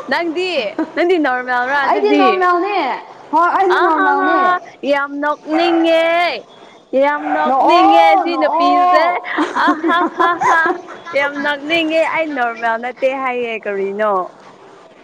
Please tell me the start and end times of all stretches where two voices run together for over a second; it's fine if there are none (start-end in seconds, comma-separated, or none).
7.5-9.0